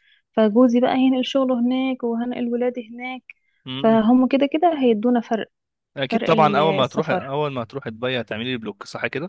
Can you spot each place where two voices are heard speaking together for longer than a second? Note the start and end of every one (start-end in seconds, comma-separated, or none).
6.1-7.3